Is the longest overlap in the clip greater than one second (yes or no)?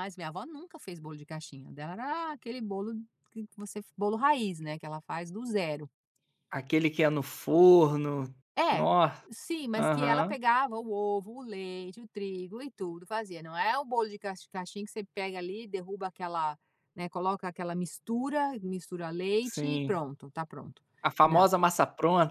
no